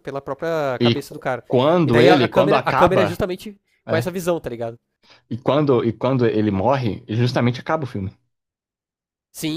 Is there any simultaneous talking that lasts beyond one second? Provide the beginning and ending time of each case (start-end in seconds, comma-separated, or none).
1.8-3.2